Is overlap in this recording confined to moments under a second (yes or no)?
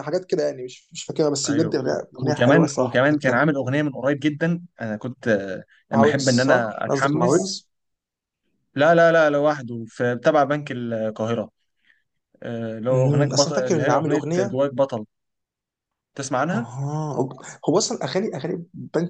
no